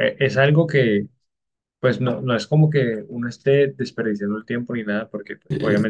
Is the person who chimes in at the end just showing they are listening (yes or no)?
yes